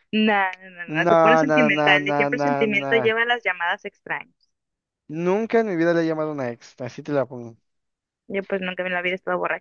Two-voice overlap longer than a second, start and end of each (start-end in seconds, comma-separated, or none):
0.9-3.1